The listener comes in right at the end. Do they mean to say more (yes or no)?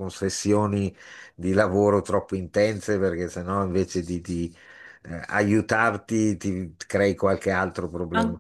yes